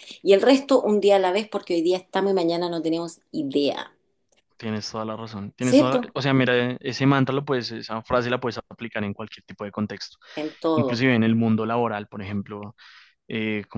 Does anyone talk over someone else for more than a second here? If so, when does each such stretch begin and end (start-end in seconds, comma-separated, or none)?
none